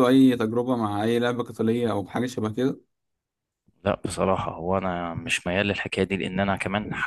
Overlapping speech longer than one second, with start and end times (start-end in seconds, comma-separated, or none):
none